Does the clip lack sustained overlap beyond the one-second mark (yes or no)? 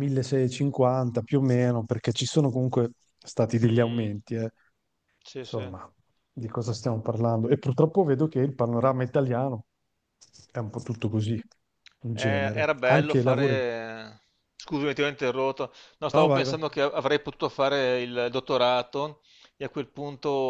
no